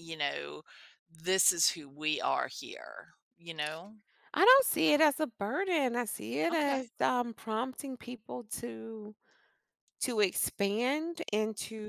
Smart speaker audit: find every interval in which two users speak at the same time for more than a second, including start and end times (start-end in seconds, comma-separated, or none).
none